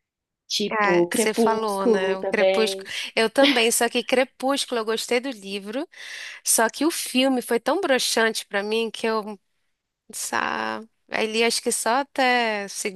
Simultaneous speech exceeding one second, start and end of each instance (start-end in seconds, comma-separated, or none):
0.7-2.9